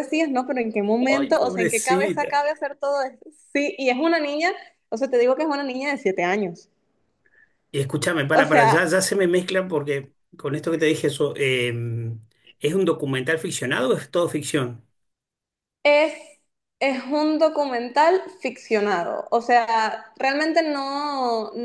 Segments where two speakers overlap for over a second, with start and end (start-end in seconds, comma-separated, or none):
1.1-2.4